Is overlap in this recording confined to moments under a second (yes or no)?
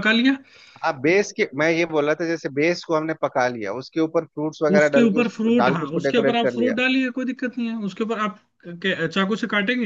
no